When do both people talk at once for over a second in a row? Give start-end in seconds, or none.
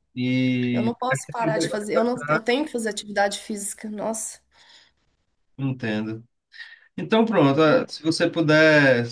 0.7-2.4